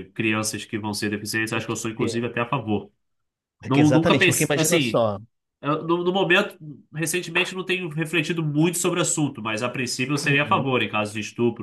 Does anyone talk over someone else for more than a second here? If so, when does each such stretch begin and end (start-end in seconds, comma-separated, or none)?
3.7-5.0